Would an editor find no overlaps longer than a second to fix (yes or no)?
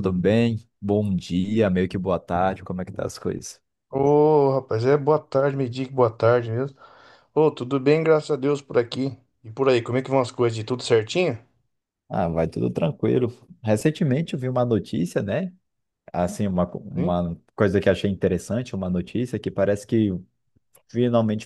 yes